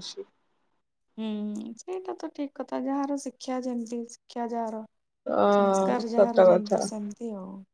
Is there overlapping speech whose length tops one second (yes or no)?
yes